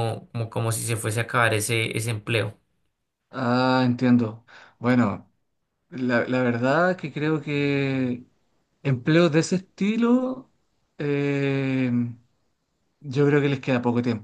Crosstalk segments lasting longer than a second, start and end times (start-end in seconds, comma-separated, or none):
none